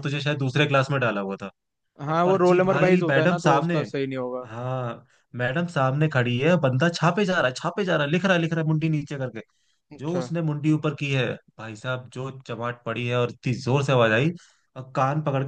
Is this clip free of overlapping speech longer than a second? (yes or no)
no